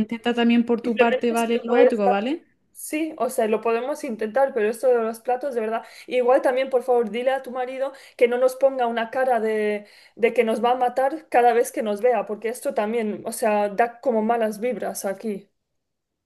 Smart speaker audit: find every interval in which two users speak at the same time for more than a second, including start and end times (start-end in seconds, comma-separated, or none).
0.8-2.0